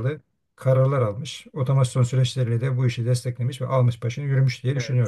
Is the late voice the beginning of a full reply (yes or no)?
yes